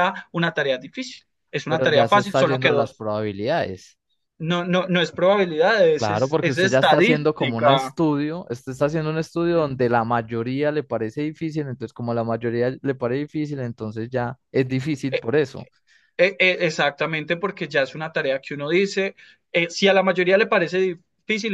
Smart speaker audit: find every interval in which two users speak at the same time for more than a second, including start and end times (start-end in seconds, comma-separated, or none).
1.7-3.0, 5.9-8.0